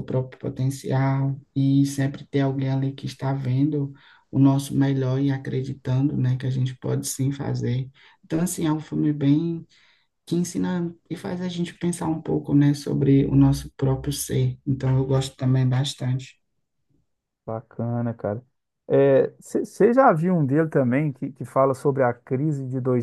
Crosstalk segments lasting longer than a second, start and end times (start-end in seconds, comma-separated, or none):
none